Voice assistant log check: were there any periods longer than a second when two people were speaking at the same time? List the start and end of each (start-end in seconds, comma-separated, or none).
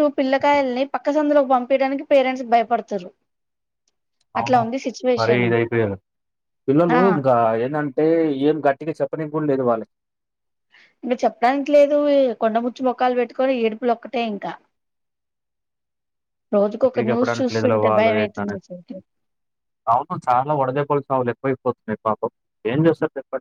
16.8-18.6